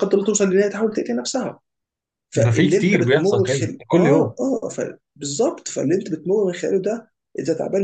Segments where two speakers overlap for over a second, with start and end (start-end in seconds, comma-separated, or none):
2.4-4.3